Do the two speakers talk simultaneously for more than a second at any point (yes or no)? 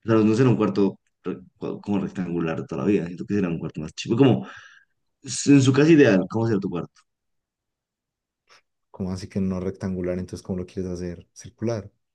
no